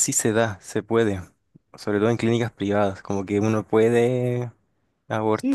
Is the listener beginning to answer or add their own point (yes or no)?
yes